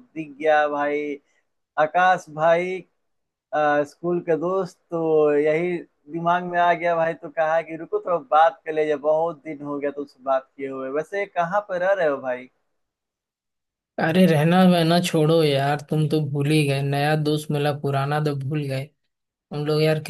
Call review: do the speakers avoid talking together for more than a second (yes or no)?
yes